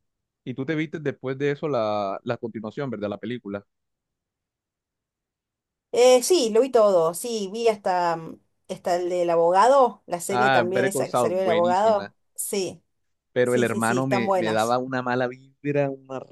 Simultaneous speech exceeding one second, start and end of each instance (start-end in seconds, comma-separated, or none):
10.3-12.1, 13.4-14.8